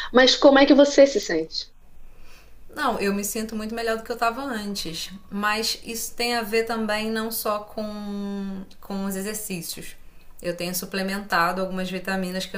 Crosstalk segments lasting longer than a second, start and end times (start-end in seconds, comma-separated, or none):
none